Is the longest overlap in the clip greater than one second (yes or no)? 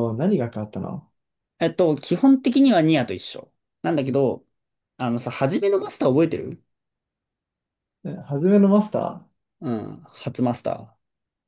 no